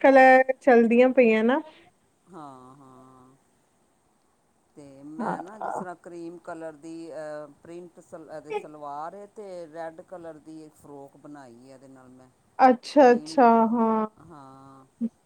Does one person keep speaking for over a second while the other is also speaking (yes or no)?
no